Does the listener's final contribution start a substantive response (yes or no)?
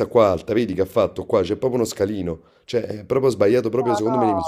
yes